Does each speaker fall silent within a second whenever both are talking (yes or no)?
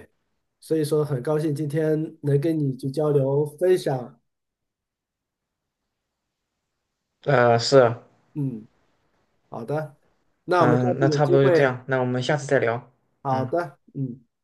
no